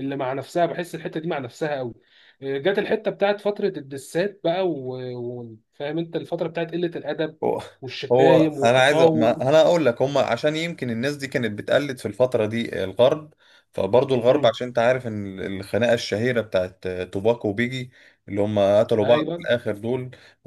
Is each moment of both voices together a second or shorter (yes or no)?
no